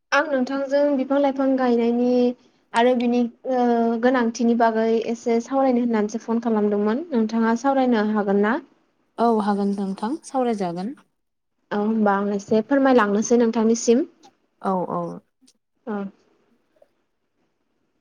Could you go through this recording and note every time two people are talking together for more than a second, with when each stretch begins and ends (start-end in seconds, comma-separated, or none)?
none